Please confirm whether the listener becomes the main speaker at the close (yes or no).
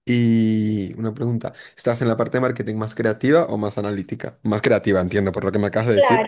yes